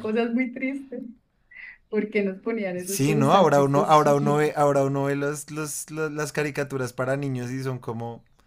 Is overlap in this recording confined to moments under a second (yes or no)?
no